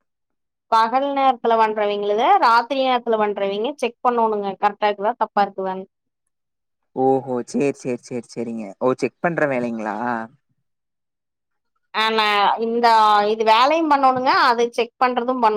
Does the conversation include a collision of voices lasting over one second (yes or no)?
no